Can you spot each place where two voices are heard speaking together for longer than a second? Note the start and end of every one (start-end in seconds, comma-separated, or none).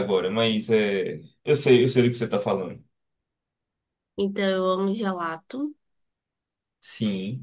none